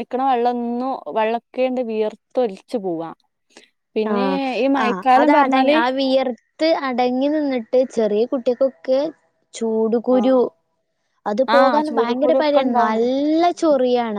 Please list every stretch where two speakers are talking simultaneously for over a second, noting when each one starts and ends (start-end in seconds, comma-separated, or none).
11.5-13.1